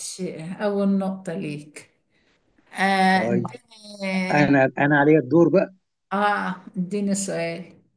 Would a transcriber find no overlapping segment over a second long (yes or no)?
yes